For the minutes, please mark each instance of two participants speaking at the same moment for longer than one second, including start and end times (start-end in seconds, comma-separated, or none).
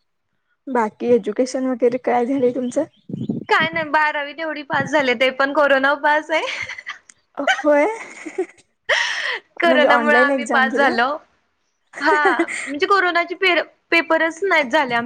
9.7-10.9